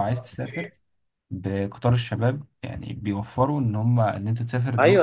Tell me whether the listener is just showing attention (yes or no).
no